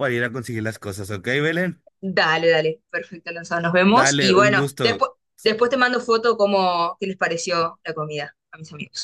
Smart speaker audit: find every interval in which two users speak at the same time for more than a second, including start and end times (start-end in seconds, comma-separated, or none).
3.8-5.0